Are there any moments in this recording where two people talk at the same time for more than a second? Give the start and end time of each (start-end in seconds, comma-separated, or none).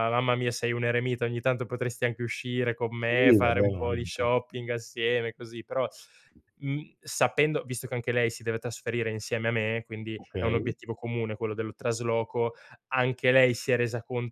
3.0-4.3